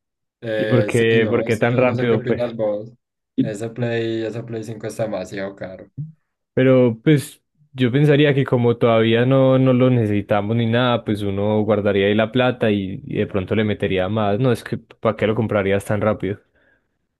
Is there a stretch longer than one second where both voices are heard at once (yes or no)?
yes